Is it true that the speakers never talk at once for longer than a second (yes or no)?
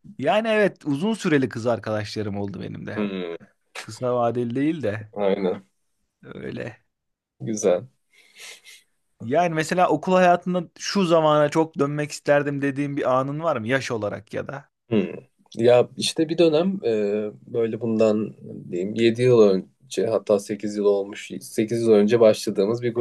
yes